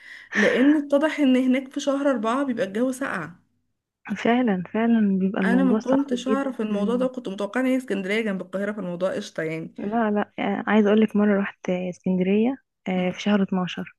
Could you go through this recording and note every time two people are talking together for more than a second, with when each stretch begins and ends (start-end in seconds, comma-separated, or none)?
5.5-7.1